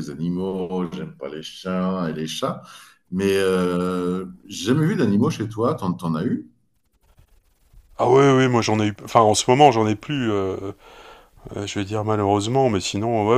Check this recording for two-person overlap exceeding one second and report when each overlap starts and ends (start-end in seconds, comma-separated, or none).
none